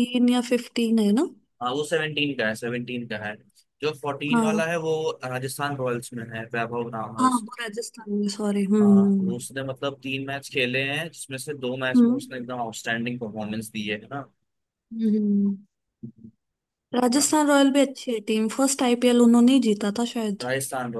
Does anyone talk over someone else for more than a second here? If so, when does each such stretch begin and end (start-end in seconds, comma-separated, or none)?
none